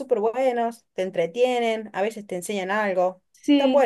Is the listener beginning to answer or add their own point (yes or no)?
yes